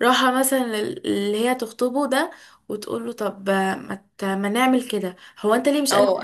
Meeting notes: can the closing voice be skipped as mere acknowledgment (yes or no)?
no